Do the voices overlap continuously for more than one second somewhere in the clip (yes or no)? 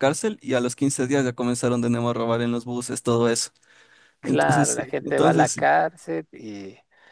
yes